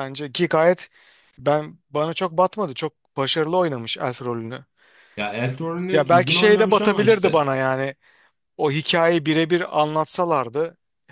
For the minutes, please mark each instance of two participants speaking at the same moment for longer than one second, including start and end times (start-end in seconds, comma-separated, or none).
5.9-7.5